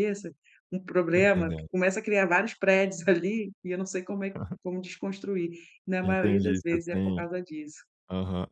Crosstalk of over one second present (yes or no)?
yes